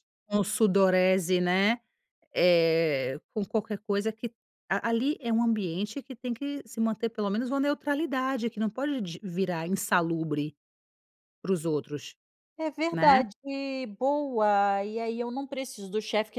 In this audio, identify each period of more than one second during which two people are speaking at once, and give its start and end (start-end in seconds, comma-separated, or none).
none